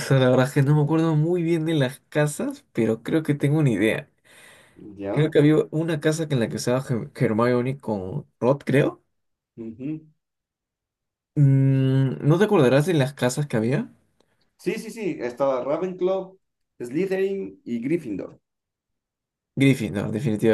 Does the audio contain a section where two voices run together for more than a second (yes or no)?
no